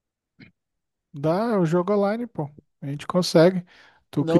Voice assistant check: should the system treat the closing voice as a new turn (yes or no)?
yes